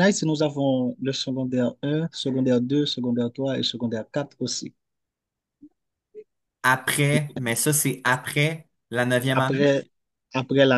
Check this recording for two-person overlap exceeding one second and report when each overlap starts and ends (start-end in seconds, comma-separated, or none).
none